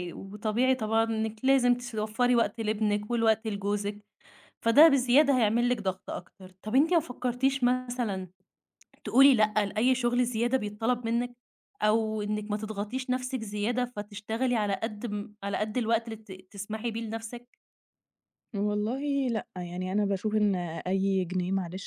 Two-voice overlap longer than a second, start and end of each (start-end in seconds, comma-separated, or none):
none